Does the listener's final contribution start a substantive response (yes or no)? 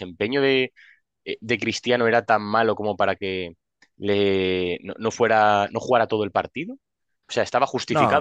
no